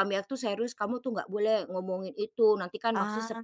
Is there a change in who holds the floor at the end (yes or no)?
no